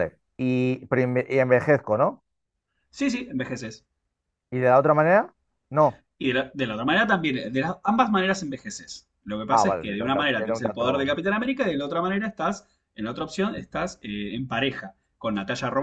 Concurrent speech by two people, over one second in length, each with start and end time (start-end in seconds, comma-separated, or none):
9.5-11.1